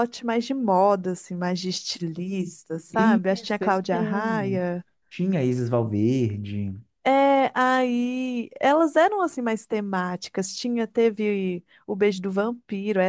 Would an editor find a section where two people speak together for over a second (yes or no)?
yes